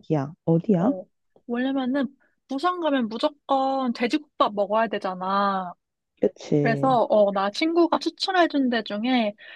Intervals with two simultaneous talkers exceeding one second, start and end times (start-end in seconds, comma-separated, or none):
none